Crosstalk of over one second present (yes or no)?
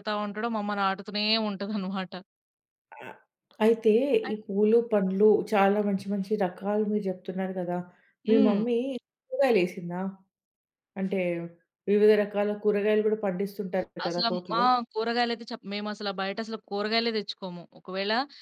no